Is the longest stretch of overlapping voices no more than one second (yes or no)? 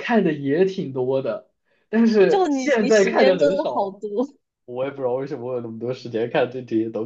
no